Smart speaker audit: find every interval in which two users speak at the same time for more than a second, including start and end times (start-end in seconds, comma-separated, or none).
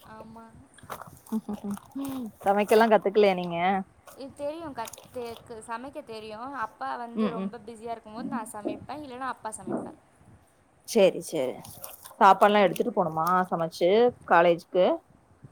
none